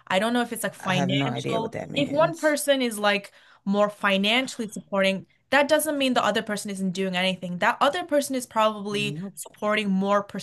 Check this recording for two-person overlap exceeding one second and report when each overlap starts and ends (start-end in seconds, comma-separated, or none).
0.8-2.6